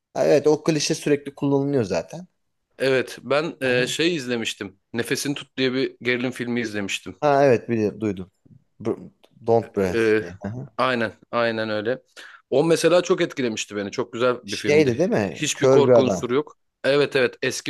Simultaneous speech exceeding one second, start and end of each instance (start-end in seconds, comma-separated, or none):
14.4-16.2